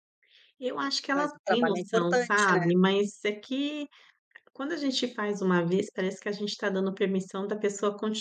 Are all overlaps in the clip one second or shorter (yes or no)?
no